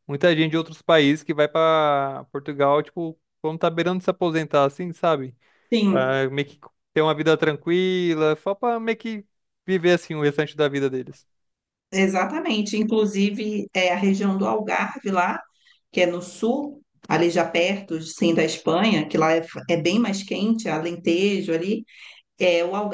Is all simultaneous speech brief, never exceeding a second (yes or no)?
yes